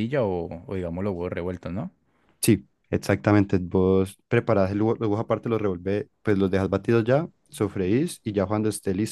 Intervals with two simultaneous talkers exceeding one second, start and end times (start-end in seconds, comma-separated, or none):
none